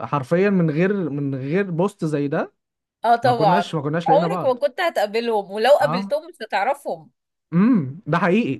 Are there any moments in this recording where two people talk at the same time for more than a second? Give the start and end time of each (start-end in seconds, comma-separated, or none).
3.2-4.6